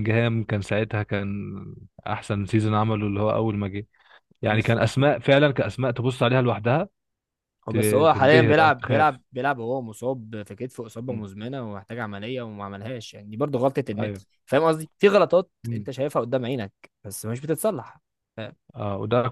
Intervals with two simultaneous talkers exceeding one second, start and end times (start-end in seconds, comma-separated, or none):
7.7-9.2